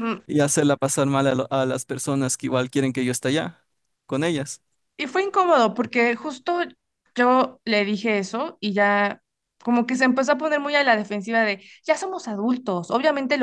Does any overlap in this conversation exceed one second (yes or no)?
no